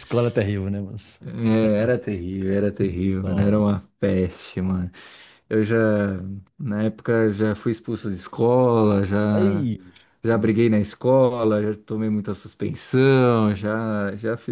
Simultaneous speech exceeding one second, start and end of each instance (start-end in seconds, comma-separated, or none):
none